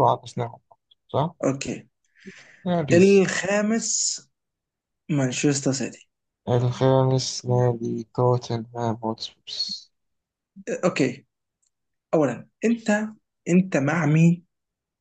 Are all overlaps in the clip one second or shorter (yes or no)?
yes